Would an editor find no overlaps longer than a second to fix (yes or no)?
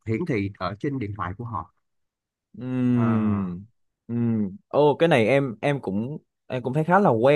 yes